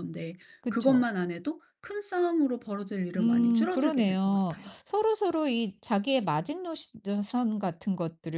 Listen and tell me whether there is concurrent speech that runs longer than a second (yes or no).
yes